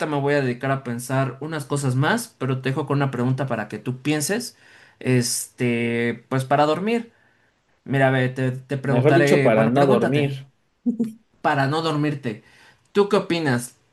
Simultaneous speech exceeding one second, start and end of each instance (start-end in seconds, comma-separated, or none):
8.8-10.3